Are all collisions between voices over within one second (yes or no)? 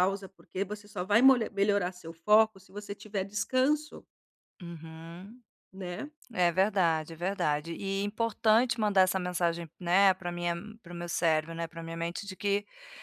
yes